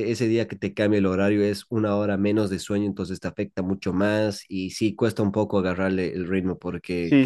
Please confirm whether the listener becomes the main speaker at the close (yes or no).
yes